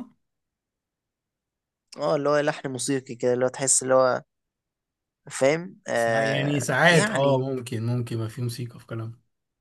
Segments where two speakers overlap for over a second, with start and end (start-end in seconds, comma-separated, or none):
5.9-7.4